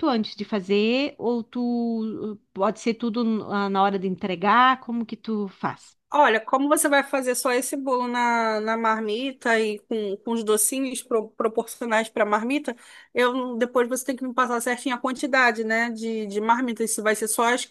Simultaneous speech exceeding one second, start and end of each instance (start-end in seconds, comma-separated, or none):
none